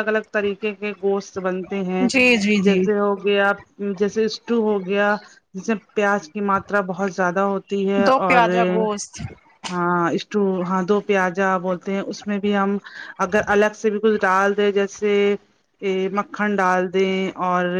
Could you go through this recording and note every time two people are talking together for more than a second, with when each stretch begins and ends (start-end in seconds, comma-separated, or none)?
none